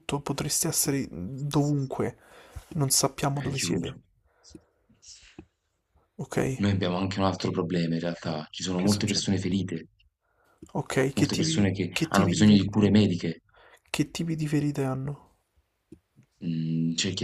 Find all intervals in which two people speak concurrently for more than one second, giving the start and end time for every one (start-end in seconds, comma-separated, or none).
11.2-12.9